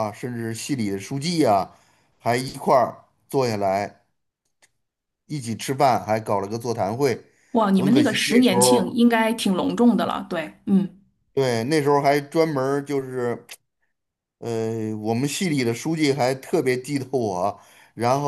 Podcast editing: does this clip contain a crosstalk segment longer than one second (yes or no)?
yes